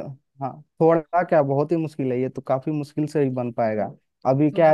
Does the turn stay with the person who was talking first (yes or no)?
yes